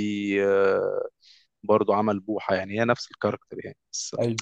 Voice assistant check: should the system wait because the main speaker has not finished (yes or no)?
yes